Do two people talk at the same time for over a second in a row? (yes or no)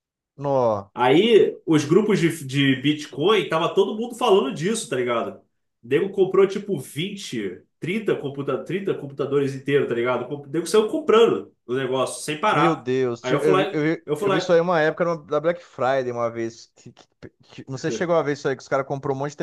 yes